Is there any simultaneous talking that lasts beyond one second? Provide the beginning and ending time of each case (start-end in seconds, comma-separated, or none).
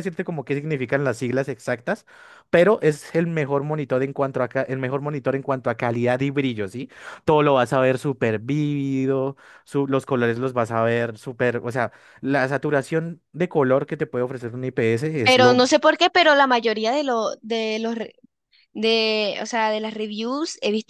none